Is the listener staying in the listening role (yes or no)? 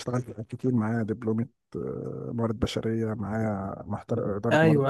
yes